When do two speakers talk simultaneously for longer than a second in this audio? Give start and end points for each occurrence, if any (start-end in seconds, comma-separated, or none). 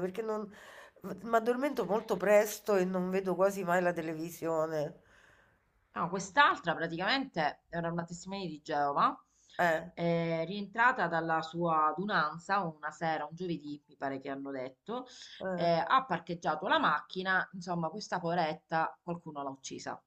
none